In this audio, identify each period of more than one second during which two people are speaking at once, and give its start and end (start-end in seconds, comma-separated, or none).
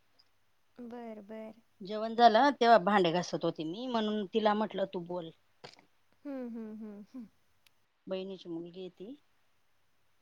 none